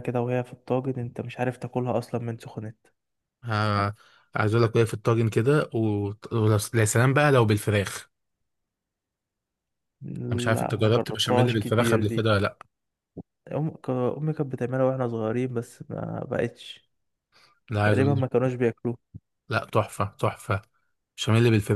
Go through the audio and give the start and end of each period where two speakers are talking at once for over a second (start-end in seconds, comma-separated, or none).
10.5-12.2